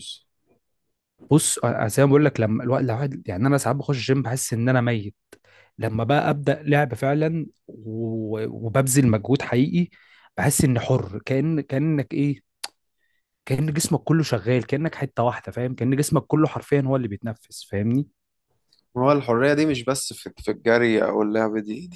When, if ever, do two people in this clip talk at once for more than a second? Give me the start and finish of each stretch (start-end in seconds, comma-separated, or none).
none